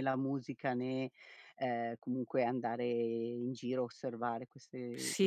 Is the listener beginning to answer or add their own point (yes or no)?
yes